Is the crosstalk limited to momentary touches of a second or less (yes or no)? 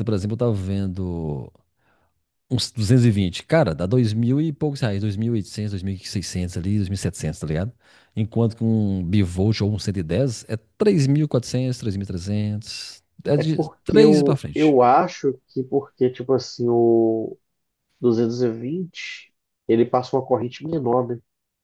no